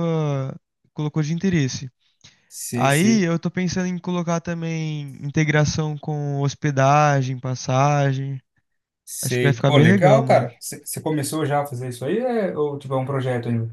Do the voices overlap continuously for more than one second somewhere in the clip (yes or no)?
yes